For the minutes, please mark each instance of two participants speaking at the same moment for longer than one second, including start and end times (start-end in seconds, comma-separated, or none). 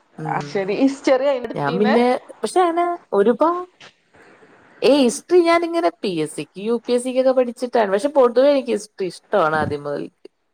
none